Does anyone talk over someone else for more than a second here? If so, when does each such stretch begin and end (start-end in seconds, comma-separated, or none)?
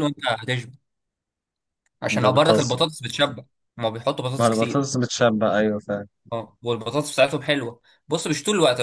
none